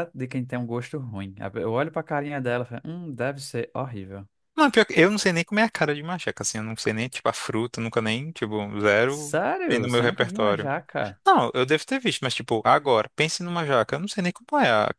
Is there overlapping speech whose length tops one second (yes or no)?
yes